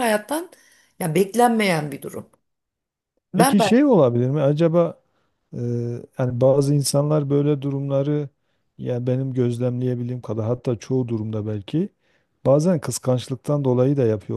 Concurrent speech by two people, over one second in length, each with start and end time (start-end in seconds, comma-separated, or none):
none